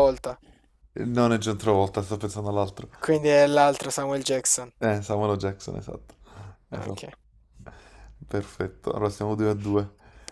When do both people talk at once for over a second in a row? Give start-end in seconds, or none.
none